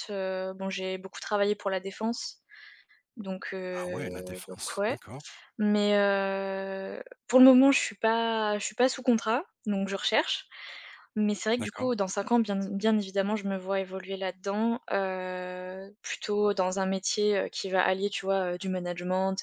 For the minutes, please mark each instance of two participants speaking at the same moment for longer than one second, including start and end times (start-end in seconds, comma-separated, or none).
none